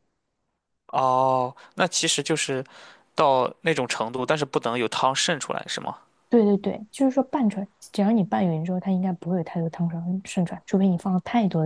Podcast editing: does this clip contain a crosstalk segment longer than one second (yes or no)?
no